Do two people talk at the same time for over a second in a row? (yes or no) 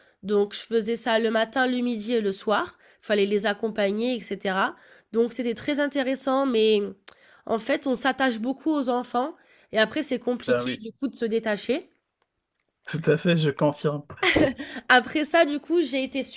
no